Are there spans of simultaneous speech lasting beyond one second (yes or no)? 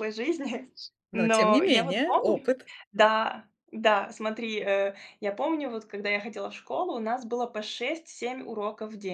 yes